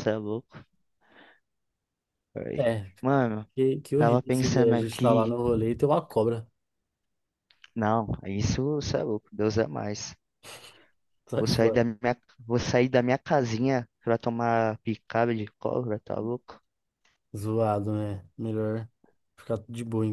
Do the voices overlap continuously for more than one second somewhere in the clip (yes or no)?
yes